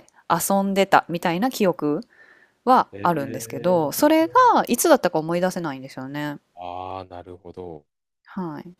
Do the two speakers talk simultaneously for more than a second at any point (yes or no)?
yes